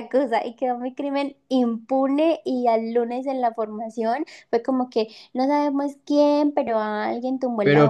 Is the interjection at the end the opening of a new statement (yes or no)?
yes